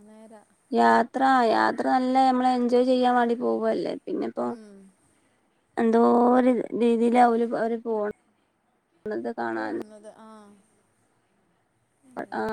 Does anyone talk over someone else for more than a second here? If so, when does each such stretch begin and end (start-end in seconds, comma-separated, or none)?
none